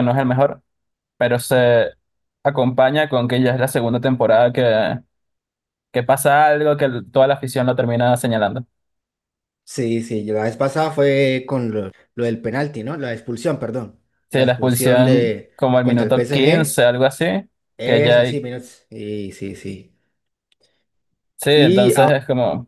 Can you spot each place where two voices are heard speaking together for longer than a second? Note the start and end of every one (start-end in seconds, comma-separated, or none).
14.3-16.8